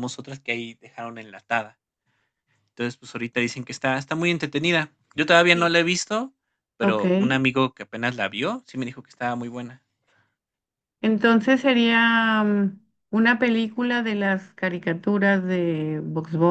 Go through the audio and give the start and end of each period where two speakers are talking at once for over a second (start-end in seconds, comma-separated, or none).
none